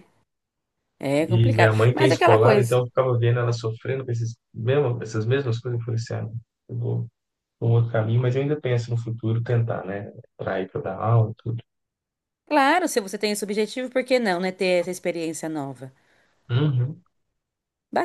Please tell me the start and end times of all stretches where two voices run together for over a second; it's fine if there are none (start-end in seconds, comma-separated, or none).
1.2-2.8